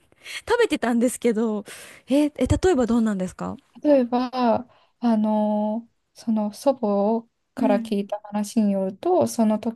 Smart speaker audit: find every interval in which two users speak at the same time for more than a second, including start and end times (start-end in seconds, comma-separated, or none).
none